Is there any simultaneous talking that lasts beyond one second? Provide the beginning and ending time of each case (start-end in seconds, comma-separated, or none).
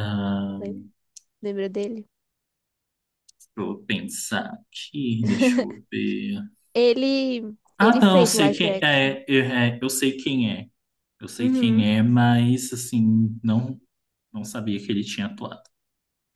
7.8-9.1